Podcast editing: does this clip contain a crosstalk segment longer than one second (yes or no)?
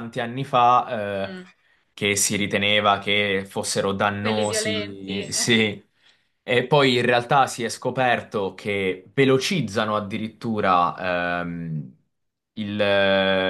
yes